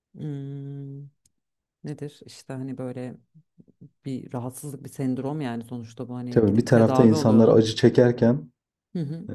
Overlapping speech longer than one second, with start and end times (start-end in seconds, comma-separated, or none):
6.3-7.6